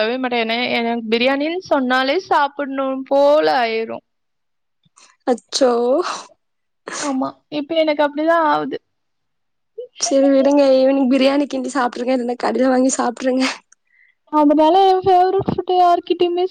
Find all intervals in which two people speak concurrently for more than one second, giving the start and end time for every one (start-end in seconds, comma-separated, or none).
none